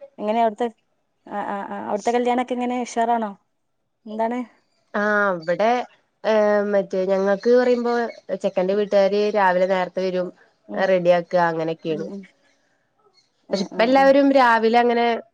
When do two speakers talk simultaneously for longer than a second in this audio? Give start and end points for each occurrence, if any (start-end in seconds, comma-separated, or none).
none